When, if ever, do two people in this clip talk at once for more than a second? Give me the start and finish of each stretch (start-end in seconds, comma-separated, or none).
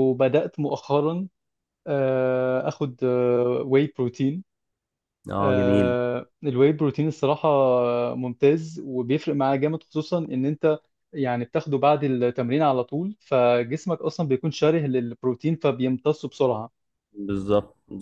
none